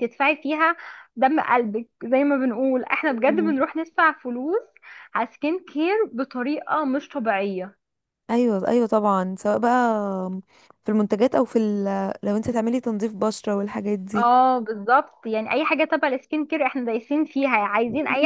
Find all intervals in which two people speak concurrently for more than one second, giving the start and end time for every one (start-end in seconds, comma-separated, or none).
none